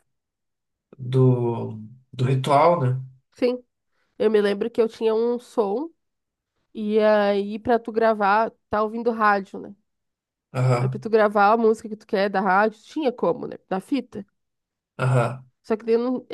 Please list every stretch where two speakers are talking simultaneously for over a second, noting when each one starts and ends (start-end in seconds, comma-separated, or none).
none